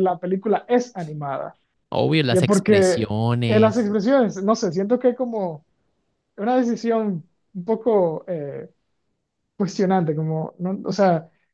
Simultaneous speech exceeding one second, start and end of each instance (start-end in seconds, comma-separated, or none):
2.3-3.9